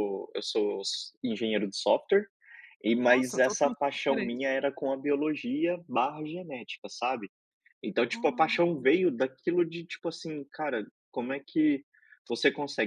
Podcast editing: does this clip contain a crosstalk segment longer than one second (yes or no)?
yes